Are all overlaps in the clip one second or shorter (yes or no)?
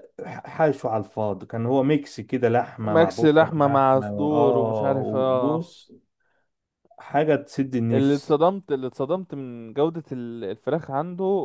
no